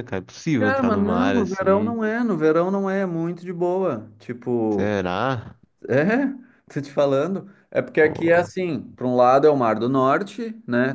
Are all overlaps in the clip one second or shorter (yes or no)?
no